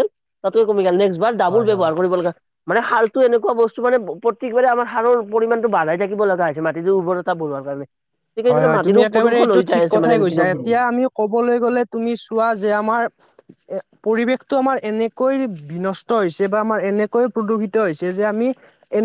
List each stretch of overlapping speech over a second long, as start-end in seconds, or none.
8.5-10.7